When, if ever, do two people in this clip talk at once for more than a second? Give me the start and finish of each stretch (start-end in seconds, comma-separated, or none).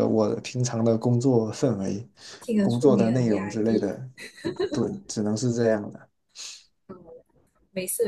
2.6-3.9